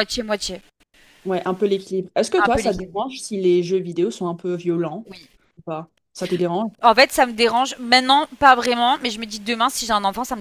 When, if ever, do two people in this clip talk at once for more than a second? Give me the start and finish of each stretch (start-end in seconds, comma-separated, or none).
none